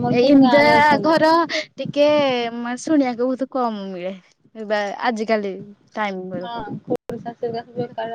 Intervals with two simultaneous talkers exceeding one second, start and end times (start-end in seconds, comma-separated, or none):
none